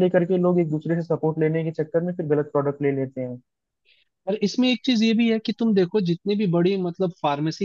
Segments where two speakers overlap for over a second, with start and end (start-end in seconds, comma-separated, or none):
none